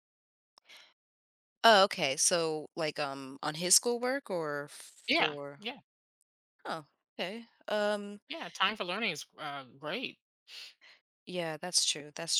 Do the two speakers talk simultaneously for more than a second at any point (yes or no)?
no